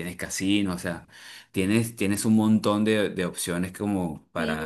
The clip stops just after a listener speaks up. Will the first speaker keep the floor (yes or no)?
no